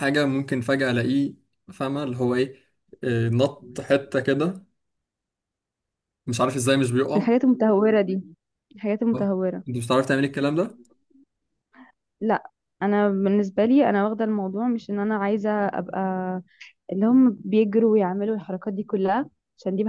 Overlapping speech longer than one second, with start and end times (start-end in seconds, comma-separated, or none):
none